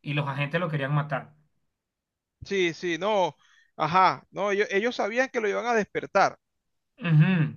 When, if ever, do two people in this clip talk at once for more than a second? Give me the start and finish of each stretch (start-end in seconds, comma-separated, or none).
none